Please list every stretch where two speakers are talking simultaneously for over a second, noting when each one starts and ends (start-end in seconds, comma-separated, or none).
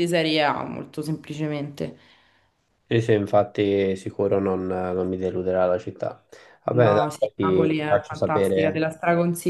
6.7-8.9